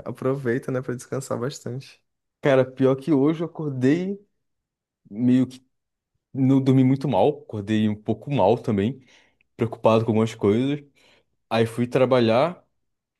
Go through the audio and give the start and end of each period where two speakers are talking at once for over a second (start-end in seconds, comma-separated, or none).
none